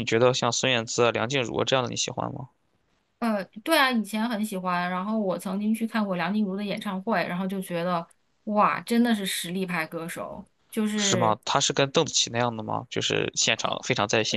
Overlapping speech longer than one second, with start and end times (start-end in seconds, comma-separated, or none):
none